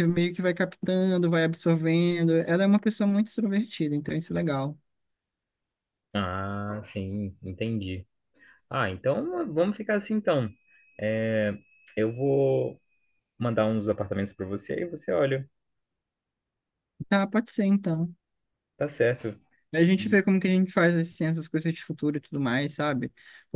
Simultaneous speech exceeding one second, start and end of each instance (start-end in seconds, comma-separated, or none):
none